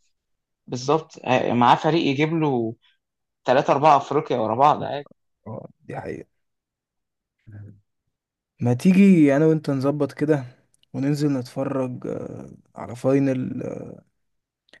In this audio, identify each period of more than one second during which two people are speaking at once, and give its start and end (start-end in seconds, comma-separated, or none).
none